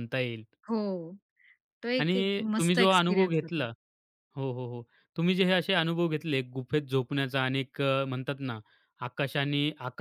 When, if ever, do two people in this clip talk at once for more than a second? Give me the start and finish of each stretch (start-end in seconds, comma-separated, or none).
2.0-3.6